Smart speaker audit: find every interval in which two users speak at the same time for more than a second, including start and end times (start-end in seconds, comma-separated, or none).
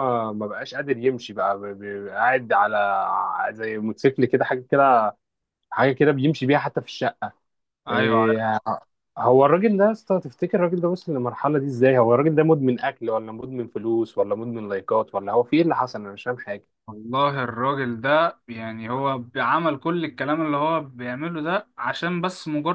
none